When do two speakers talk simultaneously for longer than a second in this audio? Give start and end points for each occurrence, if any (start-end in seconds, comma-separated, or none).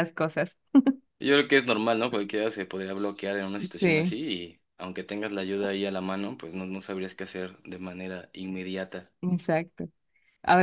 none